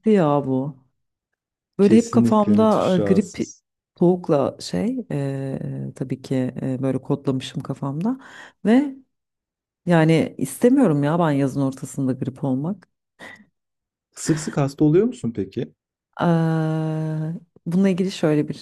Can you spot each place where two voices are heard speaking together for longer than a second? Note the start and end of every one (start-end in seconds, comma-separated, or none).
1.8-3.4